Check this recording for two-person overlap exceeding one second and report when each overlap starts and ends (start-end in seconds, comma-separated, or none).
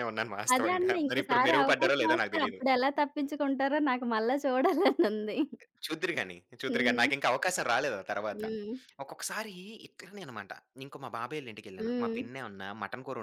0.5-2.6